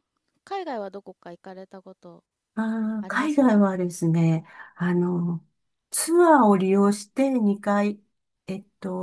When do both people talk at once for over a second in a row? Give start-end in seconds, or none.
none